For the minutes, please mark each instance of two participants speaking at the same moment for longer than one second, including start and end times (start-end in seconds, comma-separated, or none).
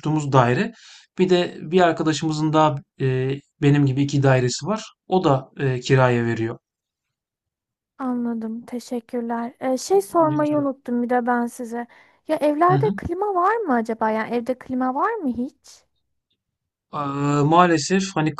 none